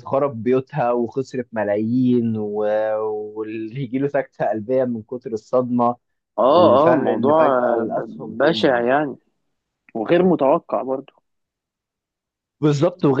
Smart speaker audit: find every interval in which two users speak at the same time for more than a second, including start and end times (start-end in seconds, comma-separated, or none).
6.5-8.8